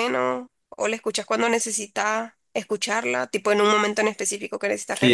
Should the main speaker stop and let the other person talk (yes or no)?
yes